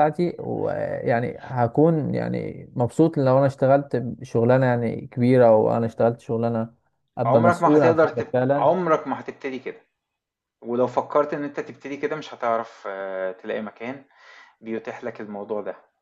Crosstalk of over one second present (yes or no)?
yes